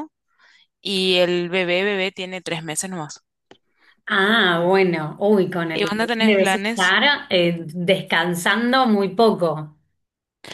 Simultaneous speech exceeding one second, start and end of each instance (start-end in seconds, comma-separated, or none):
5.7-7.0